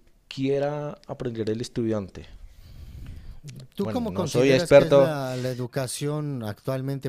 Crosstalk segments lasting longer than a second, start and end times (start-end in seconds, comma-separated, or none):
3.8-5.2